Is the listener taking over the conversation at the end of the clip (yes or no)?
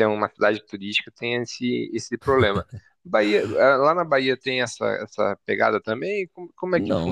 yes